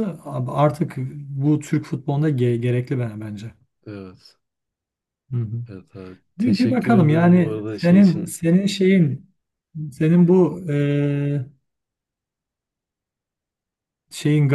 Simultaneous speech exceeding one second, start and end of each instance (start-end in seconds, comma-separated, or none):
6.4-8.4